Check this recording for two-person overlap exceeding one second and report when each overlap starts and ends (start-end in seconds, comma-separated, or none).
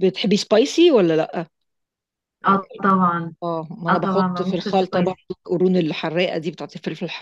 3.9-5.3